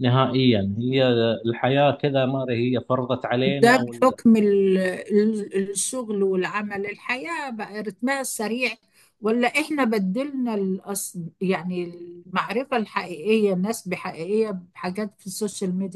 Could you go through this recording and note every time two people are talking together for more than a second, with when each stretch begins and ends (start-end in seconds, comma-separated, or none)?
none